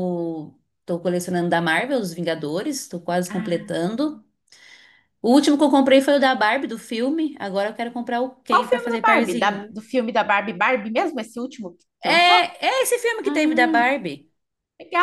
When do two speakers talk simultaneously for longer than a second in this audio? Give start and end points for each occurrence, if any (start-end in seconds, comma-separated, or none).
8.5-9.8